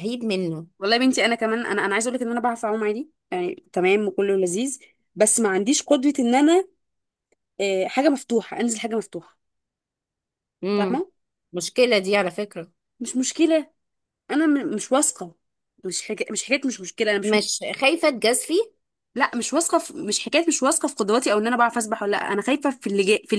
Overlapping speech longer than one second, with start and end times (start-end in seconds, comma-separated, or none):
none